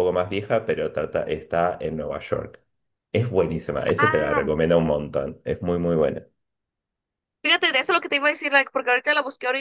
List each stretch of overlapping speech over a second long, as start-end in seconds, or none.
none